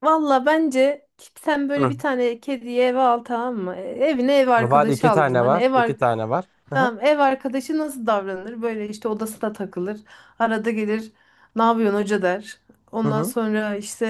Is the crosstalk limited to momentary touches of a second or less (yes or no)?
no